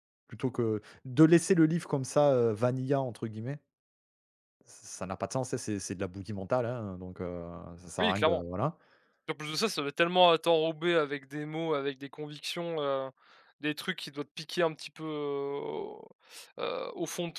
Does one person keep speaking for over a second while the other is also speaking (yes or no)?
no